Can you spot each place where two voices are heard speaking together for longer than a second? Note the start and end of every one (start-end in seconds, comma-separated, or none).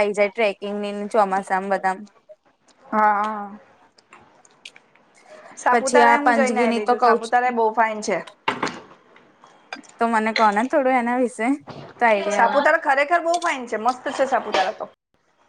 5.7-7.4